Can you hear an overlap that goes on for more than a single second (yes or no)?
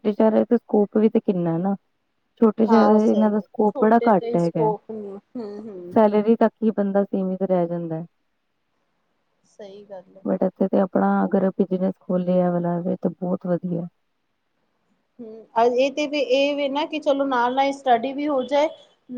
yes